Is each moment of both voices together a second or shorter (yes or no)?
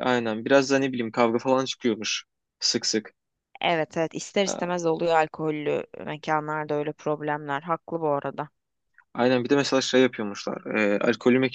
yes